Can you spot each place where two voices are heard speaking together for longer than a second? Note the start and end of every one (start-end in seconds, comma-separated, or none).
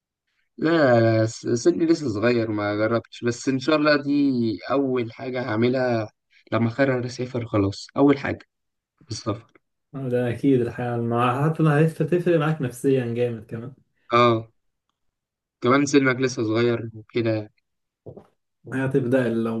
none